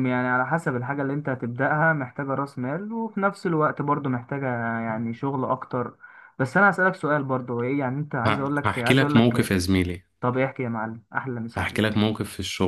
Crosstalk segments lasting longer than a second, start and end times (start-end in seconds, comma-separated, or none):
8.2-9.5